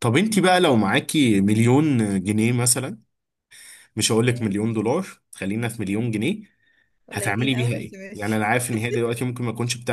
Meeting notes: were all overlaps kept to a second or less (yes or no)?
no